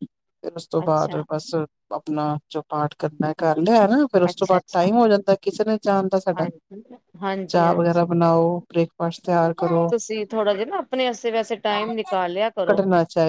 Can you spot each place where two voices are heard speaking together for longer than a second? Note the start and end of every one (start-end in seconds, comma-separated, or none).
none